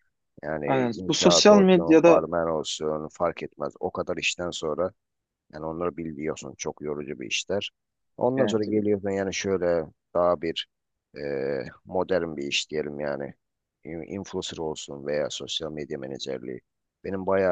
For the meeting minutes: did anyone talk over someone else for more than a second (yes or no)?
yes